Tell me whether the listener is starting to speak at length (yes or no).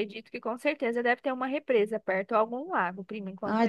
yes